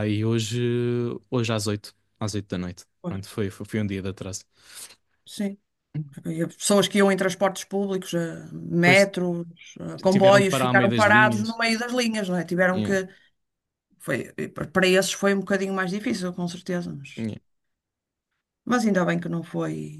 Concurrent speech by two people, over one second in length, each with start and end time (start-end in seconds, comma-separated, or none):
10.1-11.6